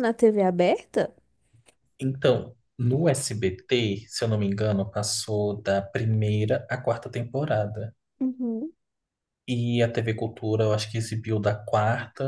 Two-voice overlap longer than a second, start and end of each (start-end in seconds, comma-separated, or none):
none